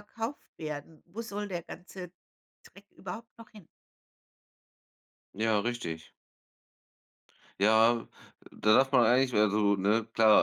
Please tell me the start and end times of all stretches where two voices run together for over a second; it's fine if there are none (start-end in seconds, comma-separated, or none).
none